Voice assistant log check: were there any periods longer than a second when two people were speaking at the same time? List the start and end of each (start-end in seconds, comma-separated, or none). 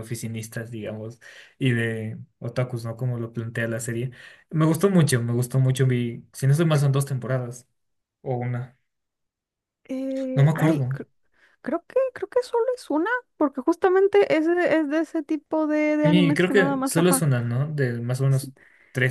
16.0-17.2